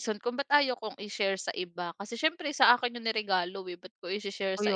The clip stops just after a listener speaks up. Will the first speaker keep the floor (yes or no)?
no